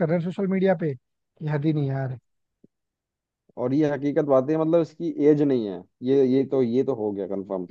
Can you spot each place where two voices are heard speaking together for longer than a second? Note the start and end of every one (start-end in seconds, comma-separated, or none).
none